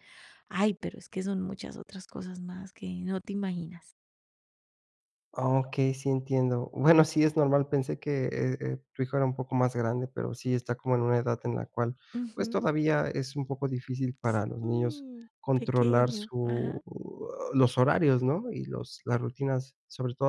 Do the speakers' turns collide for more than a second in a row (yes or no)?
yes